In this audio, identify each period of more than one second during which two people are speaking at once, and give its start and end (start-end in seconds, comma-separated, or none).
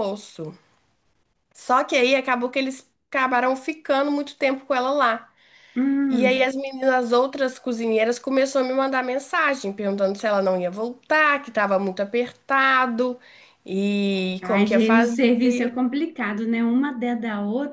14.4-15.7